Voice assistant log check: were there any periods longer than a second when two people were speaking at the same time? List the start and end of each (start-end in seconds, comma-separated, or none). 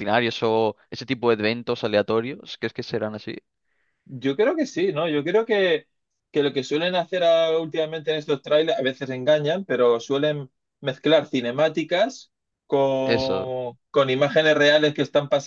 none